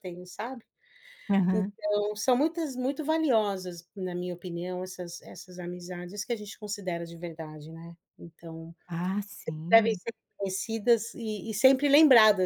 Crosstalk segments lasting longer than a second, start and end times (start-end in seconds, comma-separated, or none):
none